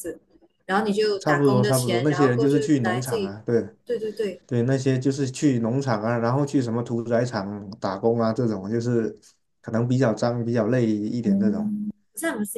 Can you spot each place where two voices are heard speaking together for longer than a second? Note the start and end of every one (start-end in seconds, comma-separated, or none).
1.2-3.4